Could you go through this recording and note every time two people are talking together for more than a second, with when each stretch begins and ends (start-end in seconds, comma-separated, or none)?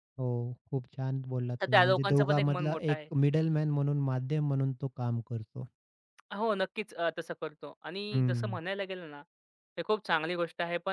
1.6-3.1